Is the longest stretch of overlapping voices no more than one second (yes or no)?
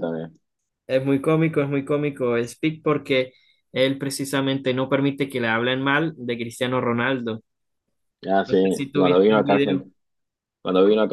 no